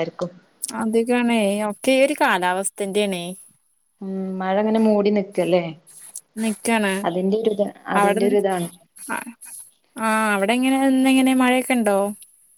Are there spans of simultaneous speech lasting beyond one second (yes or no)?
no